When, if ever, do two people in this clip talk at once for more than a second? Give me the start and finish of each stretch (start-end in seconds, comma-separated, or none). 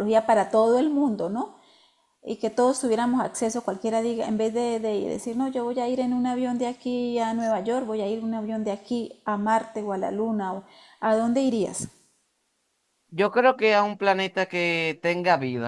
none